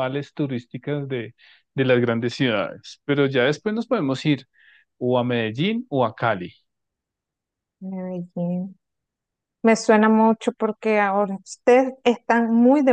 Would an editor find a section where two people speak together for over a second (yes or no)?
no